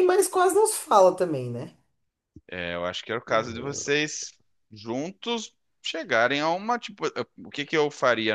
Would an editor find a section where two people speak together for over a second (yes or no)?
no